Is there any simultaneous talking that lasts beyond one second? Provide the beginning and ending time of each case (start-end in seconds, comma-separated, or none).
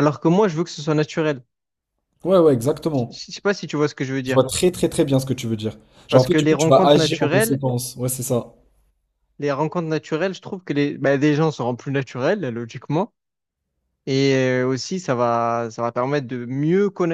6.1-7.6